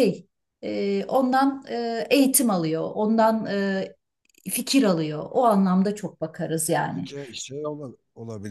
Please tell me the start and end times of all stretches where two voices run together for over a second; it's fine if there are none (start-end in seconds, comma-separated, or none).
none